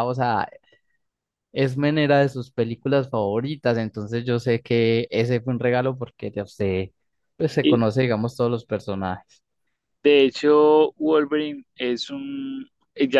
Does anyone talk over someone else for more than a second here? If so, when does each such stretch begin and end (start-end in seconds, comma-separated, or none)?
none